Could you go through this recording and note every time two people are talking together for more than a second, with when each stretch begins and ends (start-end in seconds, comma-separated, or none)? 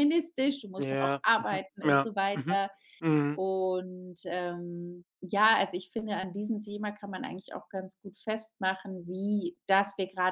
0.8-2.6